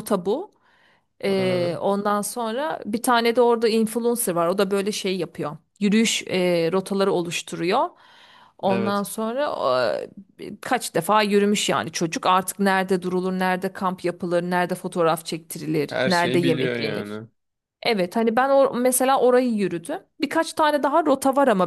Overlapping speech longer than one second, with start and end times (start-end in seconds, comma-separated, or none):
15.9-17.2